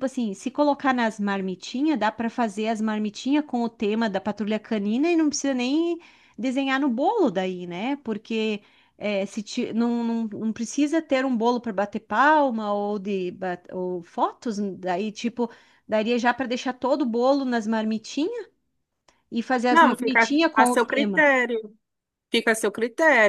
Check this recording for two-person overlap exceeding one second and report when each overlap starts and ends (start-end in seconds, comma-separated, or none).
19.7-21.3